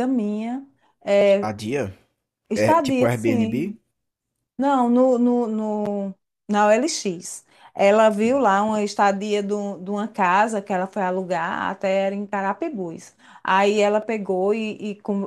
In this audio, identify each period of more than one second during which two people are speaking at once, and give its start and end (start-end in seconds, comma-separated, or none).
2.5-3.7